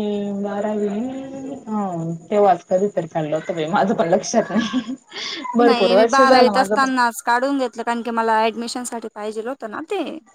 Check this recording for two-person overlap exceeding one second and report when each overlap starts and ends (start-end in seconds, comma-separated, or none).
5.6-6.9